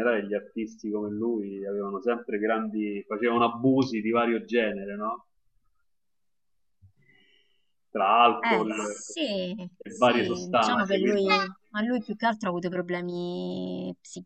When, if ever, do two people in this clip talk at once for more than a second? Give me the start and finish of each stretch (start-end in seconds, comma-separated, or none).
9.8-11.3